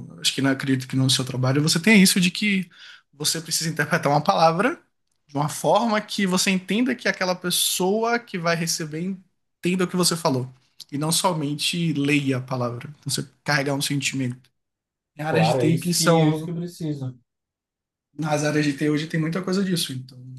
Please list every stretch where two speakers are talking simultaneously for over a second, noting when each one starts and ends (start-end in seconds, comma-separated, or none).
15.3-16.5